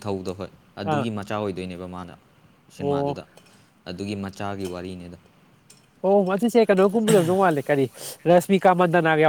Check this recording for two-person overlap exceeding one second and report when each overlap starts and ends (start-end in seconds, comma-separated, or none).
none